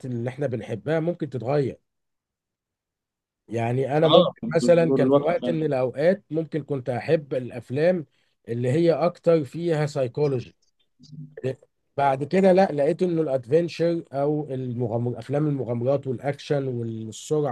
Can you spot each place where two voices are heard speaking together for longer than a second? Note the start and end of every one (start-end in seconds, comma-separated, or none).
4.0-5.6